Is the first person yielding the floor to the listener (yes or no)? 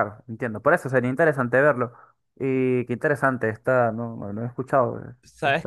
yes